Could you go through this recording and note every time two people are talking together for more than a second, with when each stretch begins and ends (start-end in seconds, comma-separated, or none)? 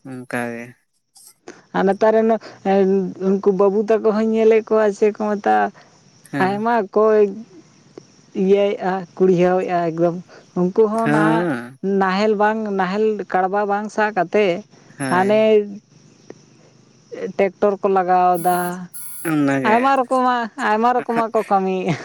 none